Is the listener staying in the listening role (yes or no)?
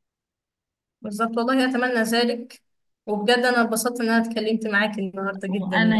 no